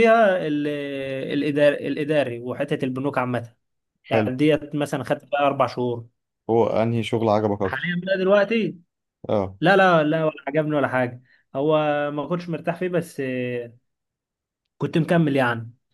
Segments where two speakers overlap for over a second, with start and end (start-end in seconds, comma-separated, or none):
none